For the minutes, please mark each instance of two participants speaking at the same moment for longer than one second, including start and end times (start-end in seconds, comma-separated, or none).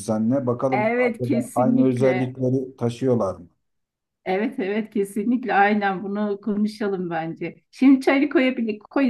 0.7-2.3